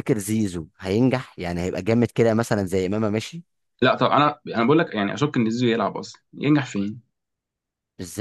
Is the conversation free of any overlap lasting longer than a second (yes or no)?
yes